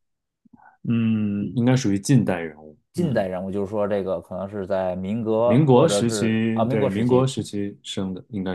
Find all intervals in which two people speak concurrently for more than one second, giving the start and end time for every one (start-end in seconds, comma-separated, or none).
5.5-7.3